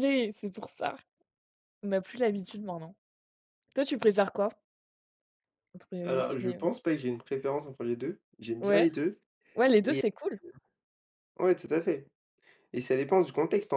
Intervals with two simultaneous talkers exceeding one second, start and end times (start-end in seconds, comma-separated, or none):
none